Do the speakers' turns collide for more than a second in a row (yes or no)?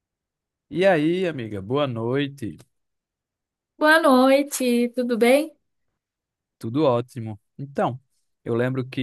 no